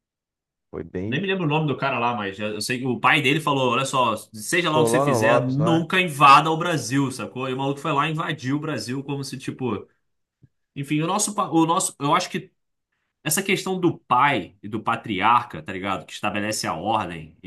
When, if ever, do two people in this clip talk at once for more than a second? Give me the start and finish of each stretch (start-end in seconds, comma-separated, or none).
4.5-5.8